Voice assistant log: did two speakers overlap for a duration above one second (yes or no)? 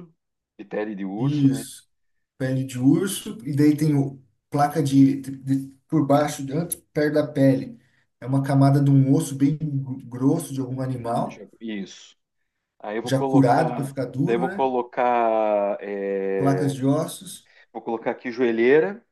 yes